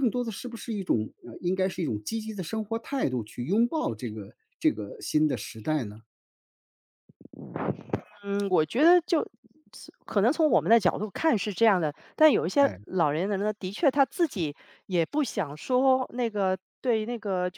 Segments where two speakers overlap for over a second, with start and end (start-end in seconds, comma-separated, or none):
none